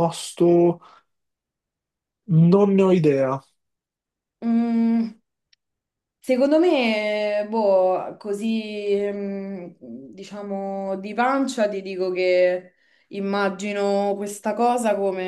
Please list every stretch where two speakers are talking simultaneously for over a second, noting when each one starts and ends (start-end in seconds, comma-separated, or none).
none